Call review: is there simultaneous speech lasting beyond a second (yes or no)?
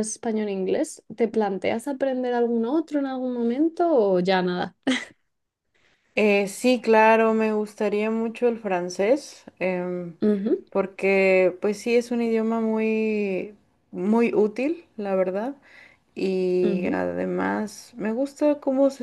no